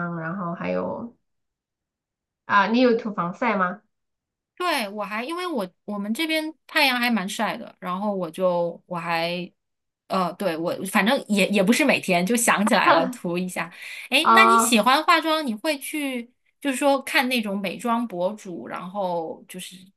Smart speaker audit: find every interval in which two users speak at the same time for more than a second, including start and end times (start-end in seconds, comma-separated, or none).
none